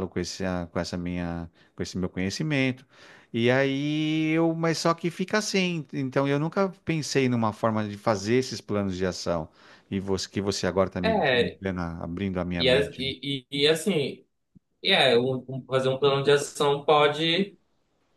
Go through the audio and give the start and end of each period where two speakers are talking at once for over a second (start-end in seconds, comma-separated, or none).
none